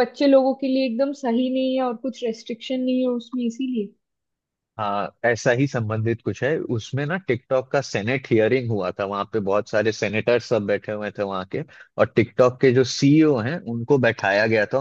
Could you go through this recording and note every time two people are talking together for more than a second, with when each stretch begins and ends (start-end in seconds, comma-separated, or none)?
none